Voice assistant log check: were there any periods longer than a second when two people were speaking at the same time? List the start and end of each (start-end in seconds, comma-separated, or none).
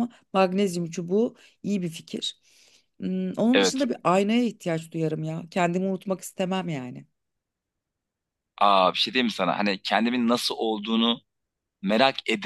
none